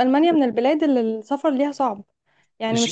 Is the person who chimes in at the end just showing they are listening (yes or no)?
no